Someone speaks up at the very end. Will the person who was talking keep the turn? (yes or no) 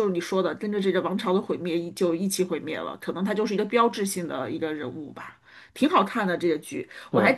yes